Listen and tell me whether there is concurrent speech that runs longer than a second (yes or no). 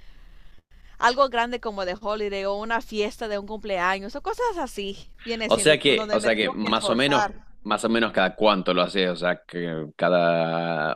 yes